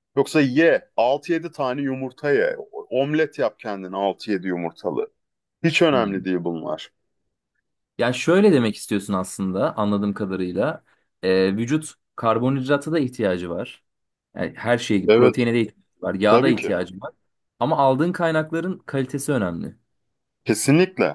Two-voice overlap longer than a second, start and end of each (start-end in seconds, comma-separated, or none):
none